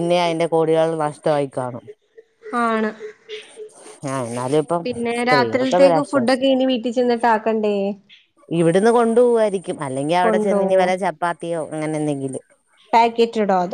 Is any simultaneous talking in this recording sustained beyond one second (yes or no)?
yes